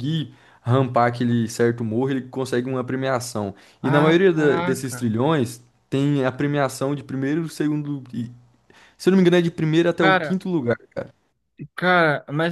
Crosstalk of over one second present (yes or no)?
yes